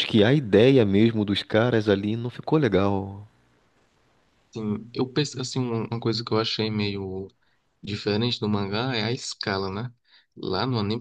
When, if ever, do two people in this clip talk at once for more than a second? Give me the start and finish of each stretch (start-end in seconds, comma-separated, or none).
none